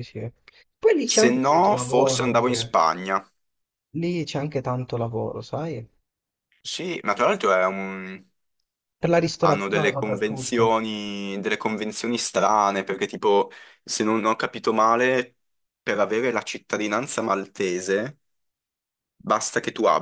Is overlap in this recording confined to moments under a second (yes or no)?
no